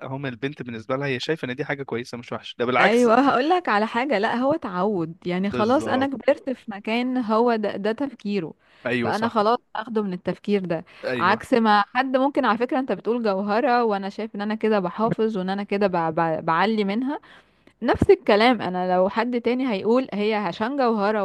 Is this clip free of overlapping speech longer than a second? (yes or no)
yes